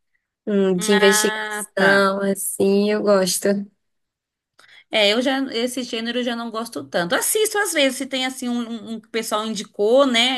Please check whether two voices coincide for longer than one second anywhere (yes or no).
yes